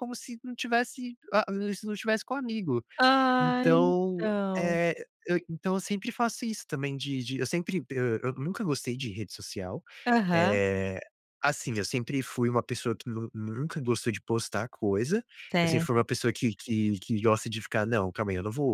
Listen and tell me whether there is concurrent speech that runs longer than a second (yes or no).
yes